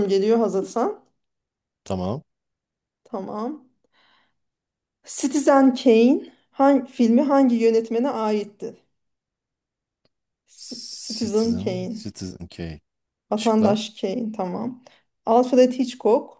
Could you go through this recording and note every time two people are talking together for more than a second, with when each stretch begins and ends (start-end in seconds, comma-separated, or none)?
10.6-12.1